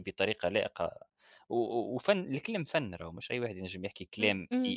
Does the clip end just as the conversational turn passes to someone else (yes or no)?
no